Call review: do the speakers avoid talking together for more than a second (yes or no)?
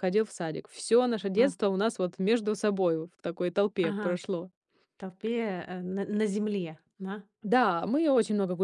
yes